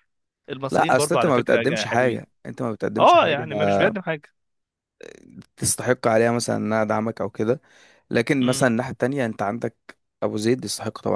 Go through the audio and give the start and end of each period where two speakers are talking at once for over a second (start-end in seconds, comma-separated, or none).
0.7-2.2